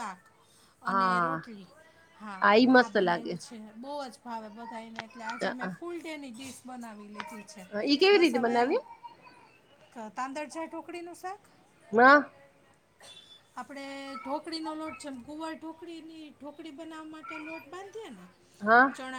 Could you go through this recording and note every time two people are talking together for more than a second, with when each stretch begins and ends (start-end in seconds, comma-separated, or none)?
none